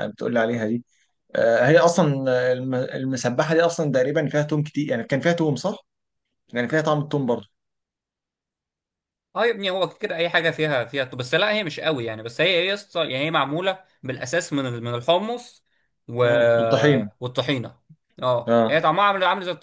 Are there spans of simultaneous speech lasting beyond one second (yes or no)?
no